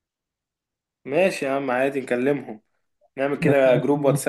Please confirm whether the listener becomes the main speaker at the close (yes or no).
no